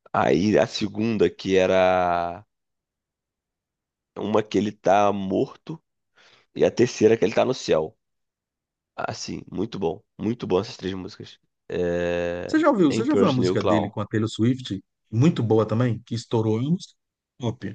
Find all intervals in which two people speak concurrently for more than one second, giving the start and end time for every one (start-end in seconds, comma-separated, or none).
12.5-13.9